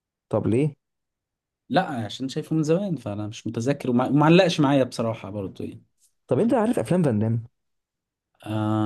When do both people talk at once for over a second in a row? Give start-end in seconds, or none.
none